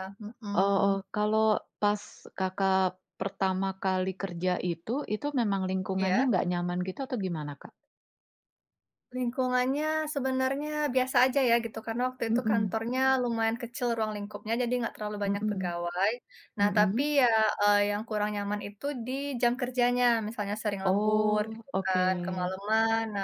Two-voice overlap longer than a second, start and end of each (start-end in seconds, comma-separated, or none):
20.9-22.6